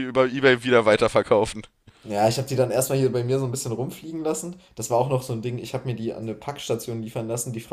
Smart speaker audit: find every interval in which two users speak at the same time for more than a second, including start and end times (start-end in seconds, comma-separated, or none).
none